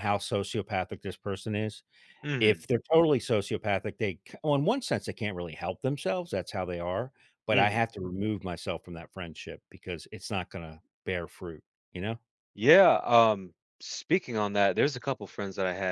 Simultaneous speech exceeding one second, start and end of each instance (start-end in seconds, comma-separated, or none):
none